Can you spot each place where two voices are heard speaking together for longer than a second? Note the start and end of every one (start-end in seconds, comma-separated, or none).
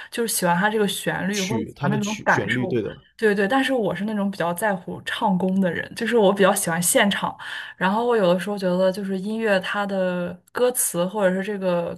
1.3-2.8